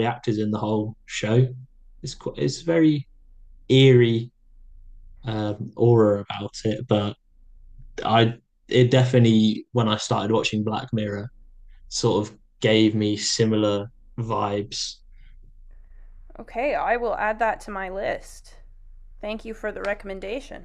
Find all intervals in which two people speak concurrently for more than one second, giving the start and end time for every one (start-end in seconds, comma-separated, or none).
none